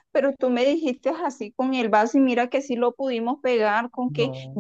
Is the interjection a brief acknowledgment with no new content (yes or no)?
yes